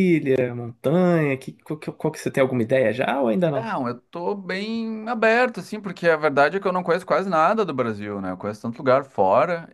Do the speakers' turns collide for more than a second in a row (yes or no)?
no